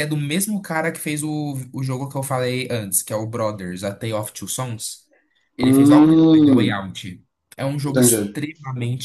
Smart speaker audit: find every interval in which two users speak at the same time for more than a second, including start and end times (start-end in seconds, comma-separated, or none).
5.6-6.8